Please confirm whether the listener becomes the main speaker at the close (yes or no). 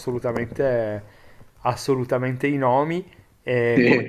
no